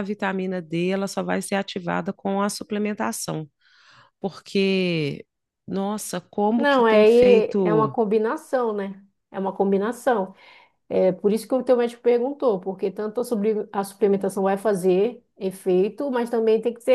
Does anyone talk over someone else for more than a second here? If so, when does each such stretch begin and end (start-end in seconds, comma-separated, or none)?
6.5-7.9